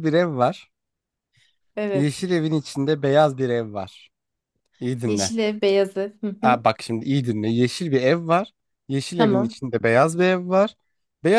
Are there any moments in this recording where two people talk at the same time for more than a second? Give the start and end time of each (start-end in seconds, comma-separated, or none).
none